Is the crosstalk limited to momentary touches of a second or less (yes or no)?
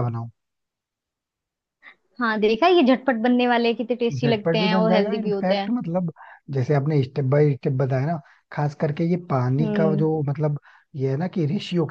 no